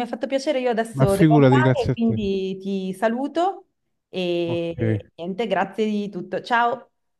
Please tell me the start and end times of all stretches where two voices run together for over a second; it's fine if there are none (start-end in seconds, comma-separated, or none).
0.9-2.2